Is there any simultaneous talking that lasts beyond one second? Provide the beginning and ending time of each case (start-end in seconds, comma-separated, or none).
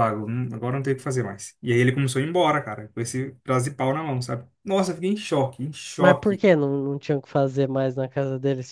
none